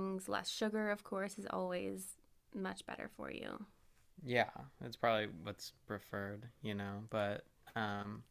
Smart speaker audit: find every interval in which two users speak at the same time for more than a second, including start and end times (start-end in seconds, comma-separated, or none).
none